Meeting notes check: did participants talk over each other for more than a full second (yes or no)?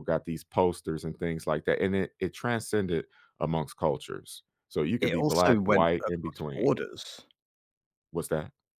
yes